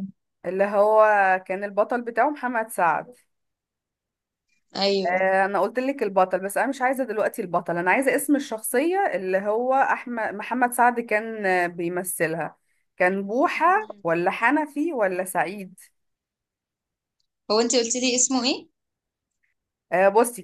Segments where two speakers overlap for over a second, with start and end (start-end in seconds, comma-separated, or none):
none